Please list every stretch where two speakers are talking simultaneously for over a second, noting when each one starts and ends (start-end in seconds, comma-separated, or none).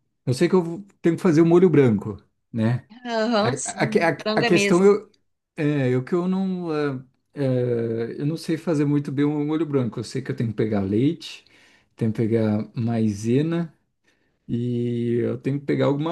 3.4-4.9